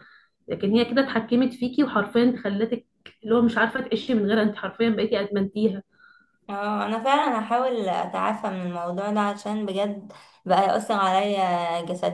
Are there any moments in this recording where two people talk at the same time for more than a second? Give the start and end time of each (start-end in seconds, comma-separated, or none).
none